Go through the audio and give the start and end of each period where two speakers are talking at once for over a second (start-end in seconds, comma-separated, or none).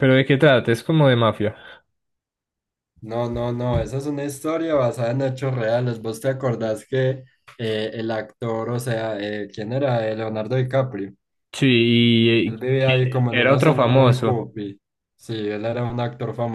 12.5-14.4